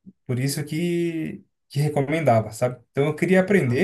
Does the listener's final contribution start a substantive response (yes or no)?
no